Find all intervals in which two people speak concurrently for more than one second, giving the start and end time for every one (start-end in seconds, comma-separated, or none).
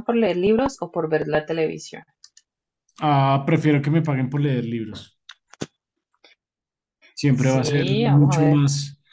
7.3-8.6